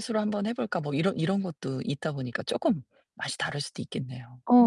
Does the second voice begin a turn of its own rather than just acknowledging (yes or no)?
yes